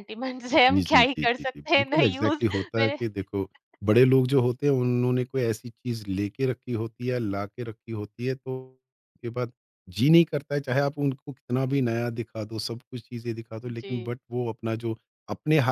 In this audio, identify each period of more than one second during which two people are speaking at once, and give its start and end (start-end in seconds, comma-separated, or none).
0.5-3.0